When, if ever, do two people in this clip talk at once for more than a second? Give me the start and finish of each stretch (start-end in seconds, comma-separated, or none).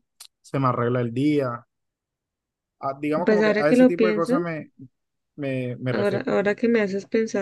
3.2-4.5